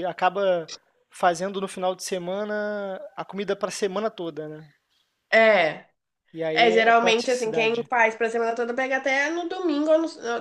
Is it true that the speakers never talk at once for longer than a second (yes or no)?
no